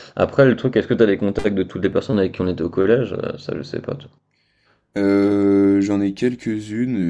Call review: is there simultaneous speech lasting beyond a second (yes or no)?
no